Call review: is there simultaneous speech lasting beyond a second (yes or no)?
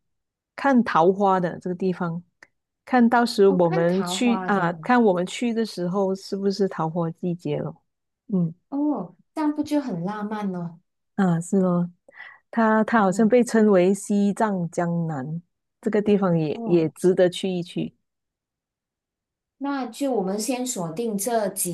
yes